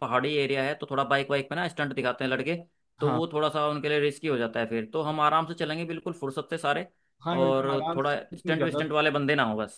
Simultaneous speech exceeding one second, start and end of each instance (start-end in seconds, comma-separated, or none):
7.3-8.8